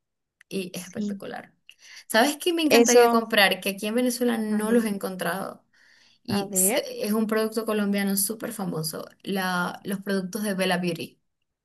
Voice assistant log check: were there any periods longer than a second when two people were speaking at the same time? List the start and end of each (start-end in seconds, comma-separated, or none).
none